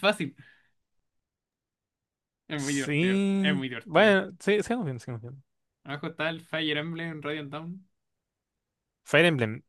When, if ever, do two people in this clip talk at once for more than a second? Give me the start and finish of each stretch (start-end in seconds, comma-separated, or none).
2.6-4.2